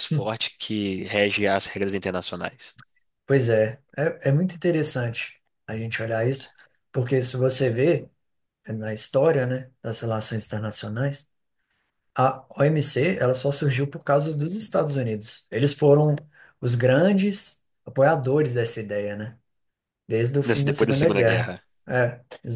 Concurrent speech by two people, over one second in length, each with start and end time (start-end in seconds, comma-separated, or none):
20.4-21.6